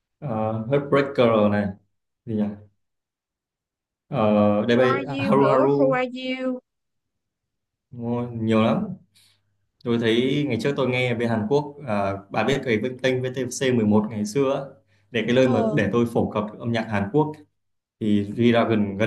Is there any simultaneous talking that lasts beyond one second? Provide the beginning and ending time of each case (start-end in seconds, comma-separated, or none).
4.7-6.0